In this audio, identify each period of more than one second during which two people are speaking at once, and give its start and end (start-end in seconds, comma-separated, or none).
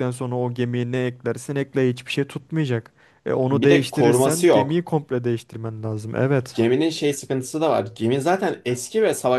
3.5-4.9